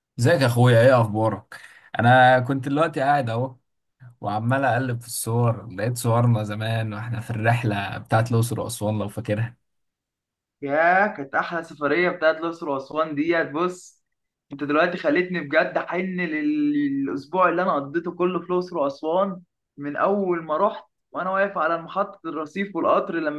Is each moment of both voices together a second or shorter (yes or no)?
yes